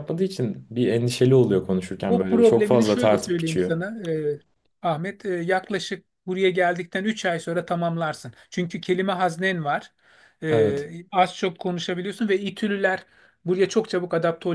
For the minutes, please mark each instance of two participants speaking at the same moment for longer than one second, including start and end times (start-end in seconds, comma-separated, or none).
2.1-3.7